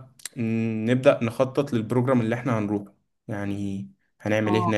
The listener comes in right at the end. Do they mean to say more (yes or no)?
yes